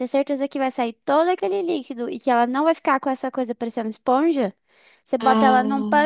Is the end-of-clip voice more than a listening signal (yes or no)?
no